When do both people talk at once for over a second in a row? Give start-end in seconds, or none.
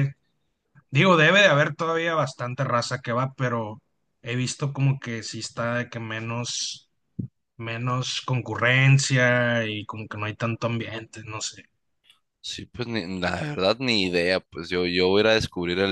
none